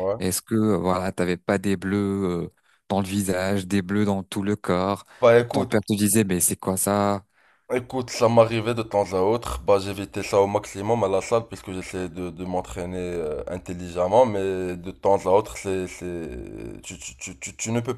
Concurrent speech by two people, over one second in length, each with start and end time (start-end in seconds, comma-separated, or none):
none